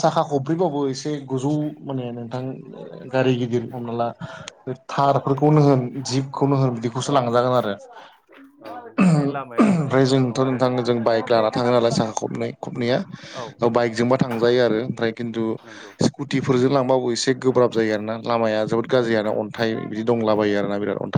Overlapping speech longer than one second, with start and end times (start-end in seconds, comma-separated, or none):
9.0-10.6